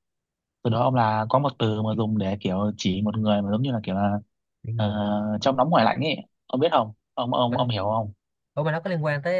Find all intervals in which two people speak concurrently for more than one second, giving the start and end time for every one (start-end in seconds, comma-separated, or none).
none